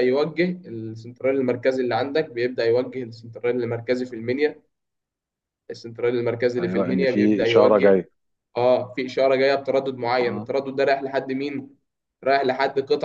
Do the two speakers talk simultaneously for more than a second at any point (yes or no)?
yes